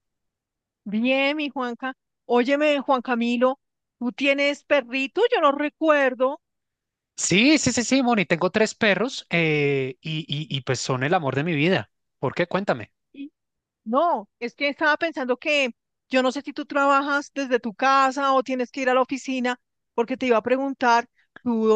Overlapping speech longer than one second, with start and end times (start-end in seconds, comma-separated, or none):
none